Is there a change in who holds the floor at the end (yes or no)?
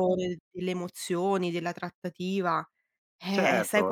yes